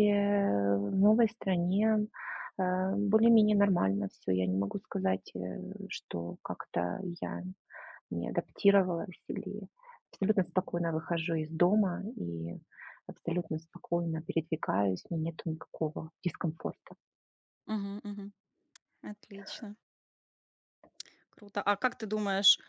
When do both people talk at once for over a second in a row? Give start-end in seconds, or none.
none